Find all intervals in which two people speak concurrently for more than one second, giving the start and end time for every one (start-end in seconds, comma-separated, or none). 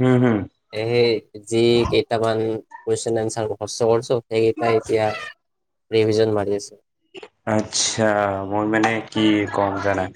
none